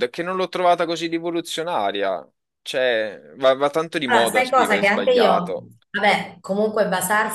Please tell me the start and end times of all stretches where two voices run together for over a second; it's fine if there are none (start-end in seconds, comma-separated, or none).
4.0-5.7